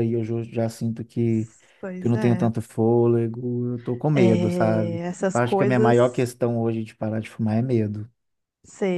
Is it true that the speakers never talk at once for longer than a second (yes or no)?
no